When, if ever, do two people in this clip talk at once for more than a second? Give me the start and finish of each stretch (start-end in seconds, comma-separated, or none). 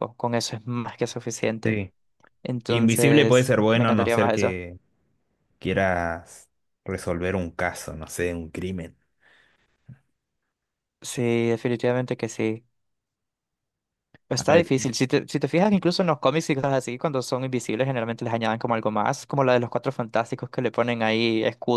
2.7-4.6